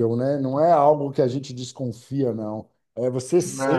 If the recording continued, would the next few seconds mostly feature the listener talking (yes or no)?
no